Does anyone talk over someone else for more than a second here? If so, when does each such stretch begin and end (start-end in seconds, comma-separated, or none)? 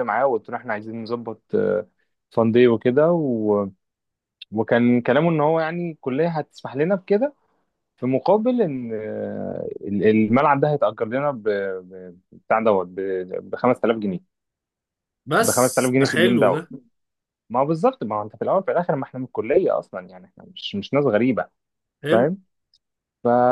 15.3-16.7